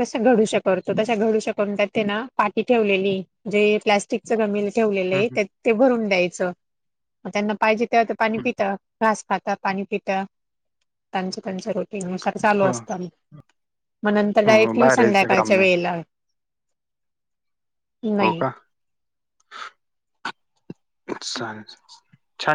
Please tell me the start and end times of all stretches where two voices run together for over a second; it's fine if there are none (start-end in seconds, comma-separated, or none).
14.5-15.7